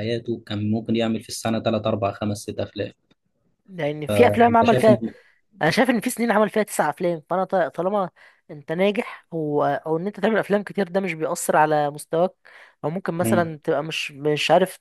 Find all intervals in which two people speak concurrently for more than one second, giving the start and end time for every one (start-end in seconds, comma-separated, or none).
none